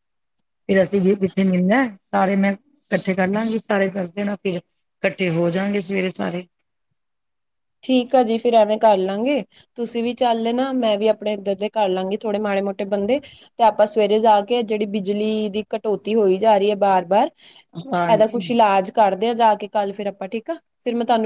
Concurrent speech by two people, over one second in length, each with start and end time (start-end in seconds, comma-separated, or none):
none